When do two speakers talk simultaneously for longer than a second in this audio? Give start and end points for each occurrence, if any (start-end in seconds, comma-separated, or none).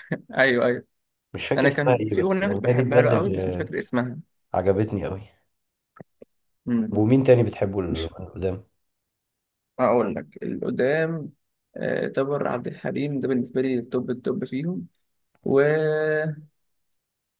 1.6-3.7